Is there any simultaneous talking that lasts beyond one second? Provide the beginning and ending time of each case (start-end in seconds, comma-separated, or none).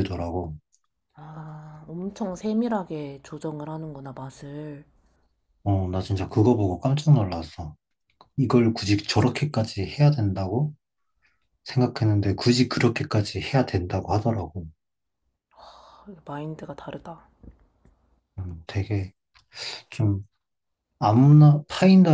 none